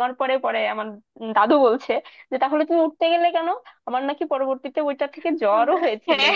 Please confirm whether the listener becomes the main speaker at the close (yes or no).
yes